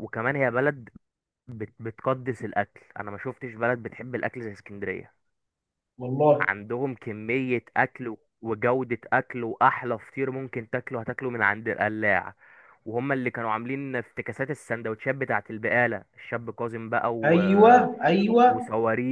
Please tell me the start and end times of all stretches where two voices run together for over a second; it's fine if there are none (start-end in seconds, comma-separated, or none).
none